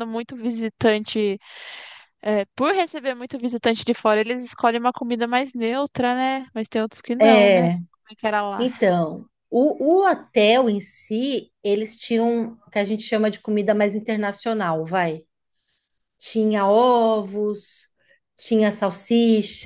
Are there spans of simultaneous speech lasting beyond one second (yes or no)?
no